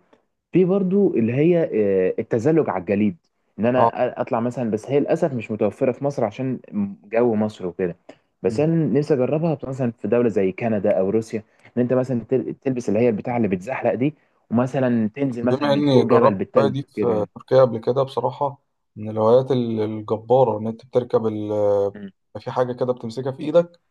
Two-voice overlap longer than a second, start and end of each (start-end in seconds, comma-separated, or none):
15.5-17.3